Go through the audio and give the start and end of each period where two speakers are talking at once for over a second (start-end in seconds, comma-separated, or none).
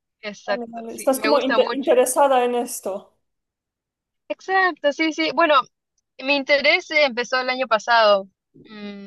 0.5-2.0